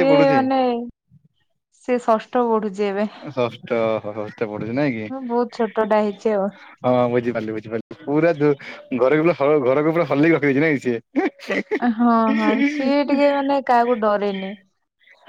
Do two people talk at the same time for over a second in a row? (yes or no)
no